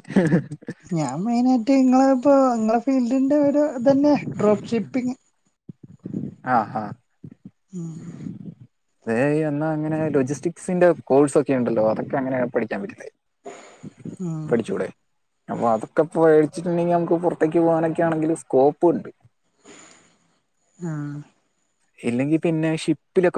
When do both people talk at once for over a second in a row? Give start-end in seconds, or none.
none